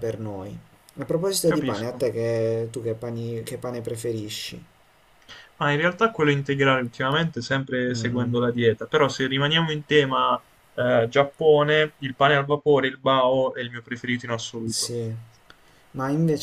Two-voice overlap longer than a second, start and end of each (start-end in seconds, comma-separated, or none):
none